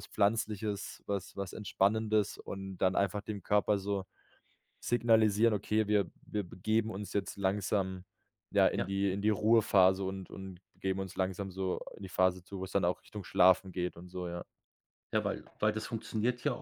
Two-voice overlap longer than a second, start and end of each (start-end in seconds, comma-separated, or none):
none